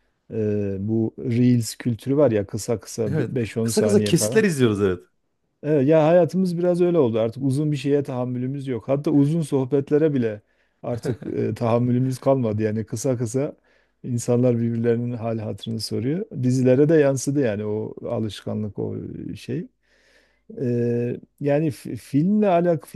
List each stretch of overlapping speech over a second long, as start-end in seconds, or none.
3.0-4.4